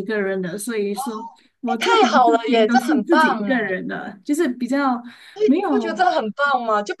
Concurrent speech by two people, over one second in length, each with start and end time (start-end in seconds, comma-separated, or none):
1.6-3.8